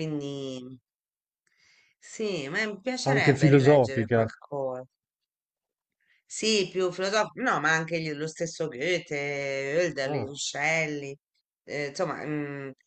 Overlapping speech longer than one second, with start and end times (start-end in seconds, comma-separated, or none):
3.0-4.3